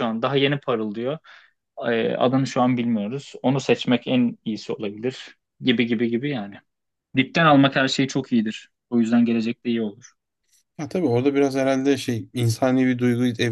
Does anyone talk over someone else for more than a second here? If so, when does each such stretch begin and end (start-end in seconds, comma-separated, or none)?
none